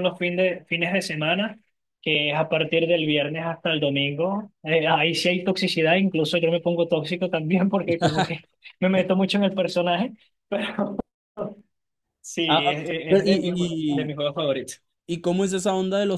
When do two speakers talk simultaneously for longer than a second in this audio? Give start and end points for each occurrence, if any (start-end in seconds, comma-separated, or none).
12.4-14.2